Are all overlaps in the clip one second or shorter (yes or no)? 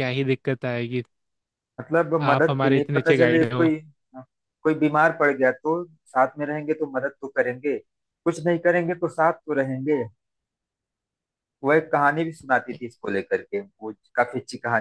no